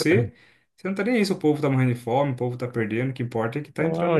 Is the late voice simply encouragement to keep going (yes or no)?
no